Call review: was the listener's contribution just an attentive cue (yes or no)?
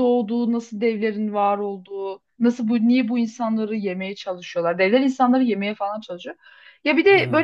yes